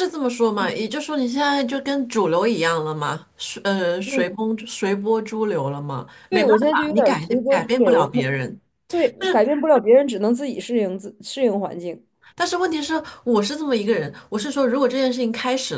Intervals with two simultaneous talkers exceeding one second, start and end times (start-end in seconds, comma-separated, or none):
6.3-8.2